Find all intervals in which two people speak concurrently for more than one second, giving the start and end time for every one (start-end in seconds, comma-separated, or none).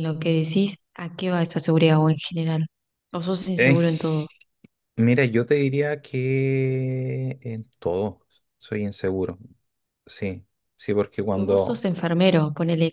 none